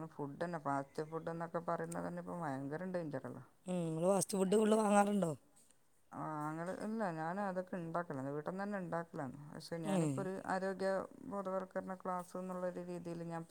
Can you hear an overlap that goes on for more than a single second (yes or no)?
no